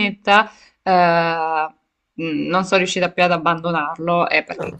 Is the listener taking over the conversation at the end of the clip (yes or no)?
no